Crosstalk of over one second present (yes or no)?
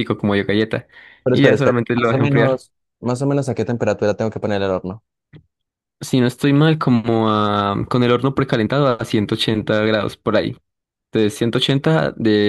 yes